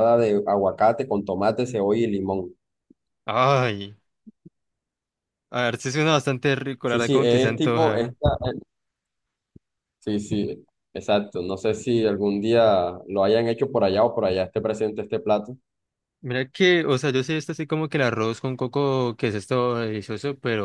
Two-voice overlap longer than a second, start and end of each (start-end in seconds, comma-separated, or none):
6.8-8.2